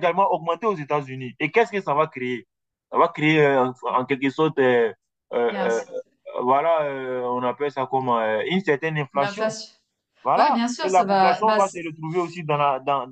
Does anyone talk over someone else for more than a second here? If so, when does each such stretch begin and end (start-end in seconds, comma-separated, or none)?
10.3-11.8